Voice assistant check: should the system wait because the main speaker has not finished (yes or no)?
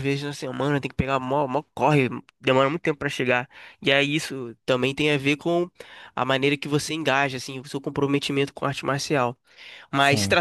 yes